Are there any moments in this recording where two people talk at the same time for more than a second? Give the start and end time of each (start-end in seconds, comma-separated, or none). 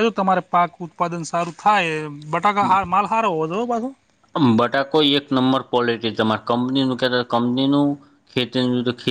none